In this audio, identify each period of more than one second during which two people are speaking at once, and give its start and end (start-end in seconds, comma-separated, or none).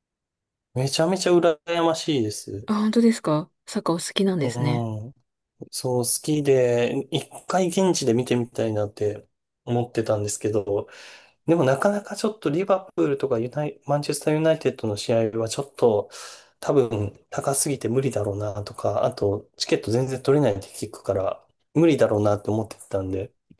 none